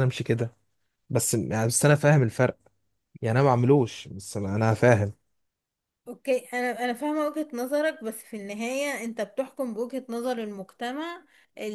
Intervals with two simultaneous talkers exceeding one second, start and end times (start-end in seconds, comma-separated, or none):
none